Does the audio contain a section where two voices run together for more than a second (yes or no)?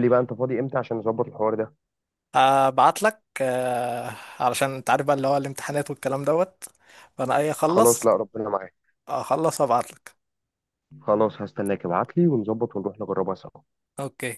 no